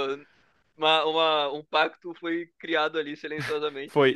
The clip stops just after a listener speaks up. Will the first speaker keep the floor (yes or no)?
no